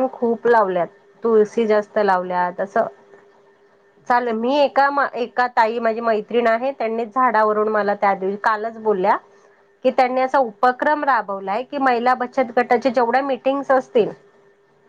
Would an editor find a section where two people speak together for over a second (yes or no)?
yes